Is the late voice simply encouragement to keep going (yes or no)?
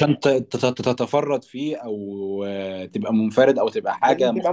yes